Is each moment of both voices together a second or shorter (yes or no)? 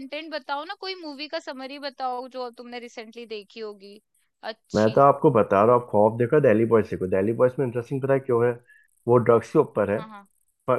yes